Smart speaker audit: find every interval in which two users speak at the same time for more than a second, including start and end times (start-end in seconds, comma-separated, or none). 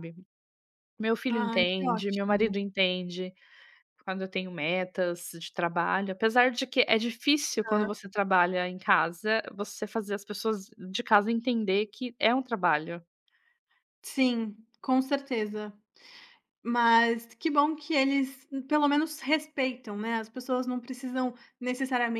1.3-2.5